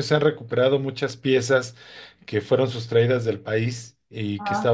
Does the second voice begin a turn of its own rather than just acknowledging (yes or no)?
no